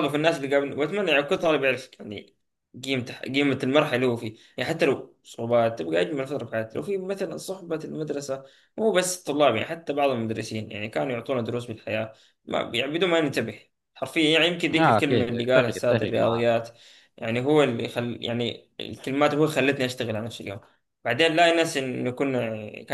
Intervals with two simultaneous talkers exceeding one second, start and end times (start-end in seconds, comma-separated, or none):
14.7-16.4